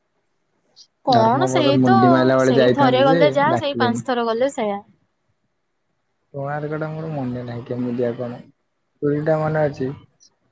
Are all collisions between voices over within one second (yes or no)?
no